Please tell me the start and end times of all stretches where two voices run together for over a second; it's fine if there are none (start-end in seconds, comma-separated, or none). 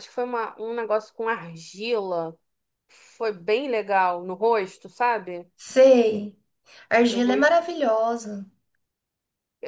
none